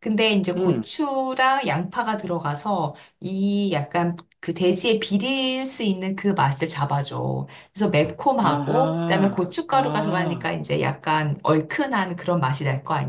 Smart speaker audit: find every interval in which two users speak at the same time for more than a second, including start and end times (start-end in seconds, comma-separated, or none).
8.4-10.6